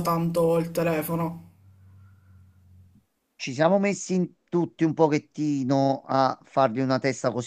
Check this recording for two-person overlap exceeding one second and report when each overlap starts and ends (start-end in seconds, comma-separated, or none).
none